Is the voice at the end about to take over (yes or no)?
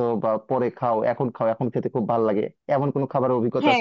yes